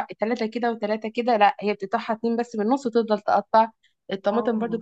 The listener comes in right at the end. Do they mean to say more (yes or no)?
no